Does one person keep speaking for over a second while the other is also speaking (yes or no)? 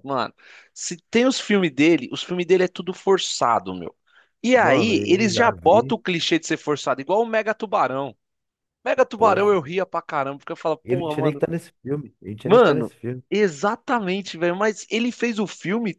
yes